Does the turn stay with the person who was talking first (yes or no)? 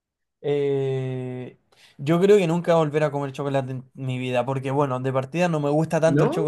yes